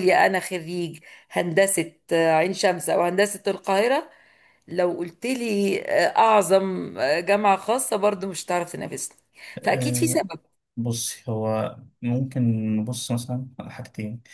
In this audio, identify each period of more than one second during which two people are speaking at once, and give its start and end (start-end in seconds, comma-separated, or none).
none